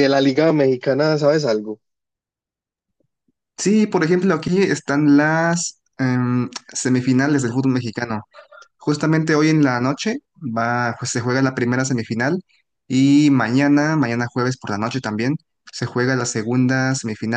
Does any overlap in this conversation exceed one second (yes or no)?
no